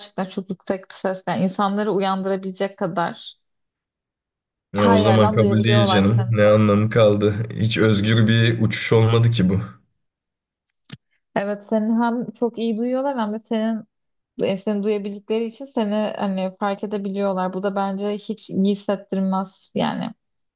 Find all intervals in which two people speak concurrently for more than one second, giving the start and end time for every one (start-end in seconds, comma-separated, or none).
4.8-6.4